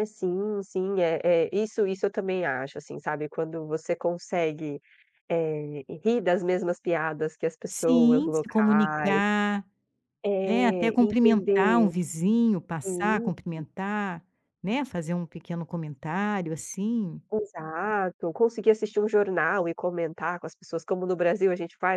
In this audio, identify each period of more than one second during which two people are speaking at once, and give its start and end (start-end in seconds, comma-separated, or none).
7.7-9.2, 10.4-11.9